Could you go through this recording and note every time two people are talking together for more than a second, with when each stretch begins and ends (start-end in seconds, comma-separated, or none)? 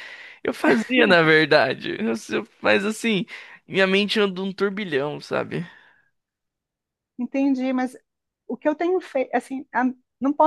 none